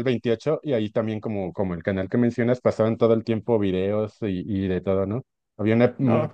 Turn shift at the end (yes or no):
no